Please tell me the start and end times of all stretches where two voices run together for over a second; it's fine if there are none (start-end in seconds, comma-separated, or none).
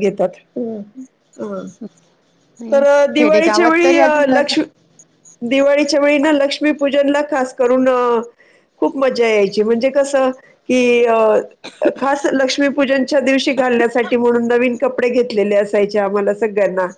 2.7-4.5